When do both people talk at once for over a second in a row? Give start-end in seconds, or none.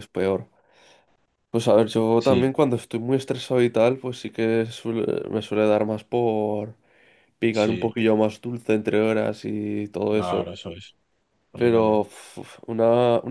none